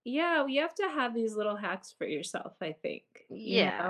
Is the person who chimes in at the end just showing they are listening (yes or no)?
no